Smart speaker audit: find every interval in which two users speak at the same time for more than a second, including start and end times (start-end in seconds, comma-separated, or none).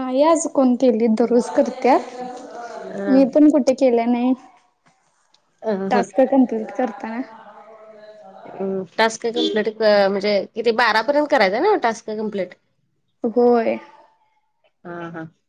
none